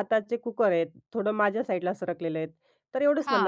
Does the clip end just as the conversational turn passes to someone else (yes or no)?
no